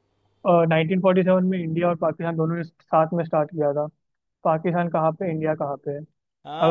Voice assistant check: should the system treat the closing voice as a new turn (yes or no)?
yes